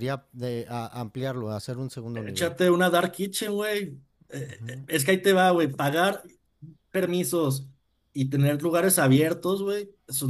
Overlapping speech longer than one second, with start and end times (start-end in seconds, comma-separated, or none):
none